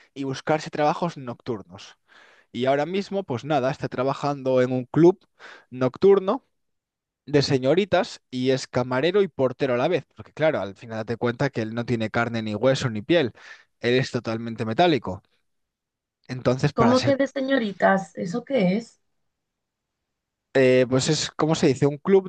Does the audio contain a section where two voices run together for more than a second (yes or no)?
no